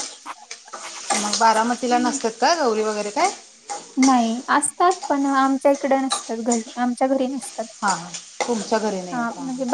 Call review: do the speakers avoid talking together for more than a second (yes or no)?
yes